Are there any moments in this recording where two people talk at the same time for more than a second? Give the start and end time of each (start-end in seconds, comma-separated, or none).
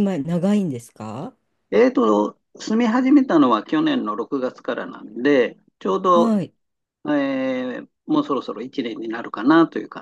none